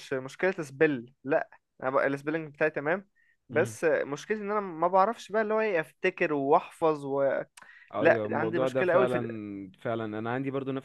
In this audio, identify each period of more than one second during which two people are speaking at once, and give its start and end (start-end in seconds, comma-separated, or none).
8.0-9.3